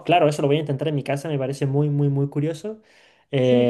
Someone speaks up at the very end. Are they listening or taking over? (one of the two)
taking over